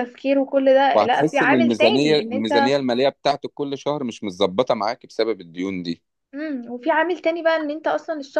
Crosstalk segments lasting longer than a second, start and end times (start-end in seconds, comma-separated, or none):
0.9-2.8